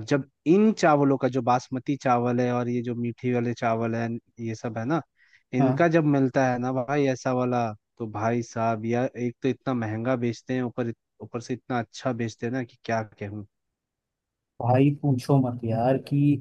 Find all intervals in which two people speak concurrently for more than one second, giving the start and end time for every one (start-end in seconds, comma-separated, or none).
none